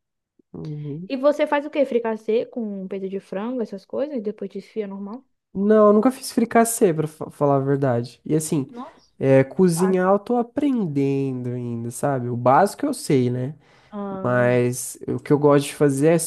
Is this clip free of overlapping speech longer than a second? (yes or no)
yes